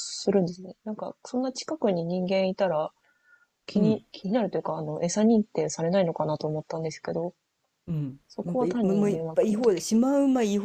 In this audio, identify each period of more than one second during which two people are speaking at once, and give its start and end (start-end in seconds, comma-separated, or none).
8.3-9.8